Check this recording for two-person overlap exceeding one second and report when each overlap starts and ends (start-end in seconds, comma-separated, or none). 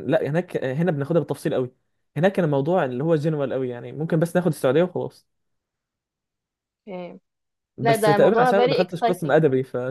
7.8-9.4